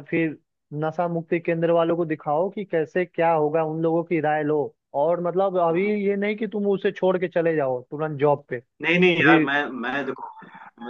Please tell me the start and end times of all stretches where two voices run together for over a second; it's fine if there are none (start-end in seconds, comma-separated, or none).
none